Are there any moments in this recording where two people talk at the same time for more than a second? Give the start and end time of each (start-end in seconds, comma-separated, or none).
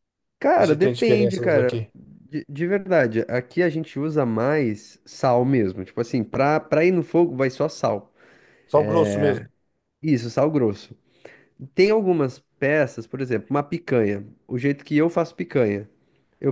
0.6-1.9